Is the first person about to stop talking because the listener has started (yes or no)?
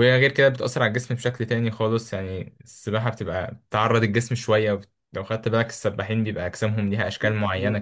yes